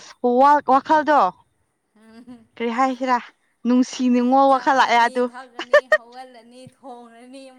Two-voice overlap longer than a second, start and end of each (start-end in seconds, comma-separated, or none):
none